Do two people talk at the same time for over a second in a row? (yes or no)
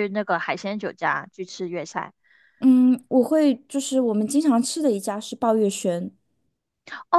no